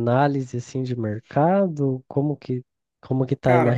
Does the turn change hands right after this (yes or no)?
no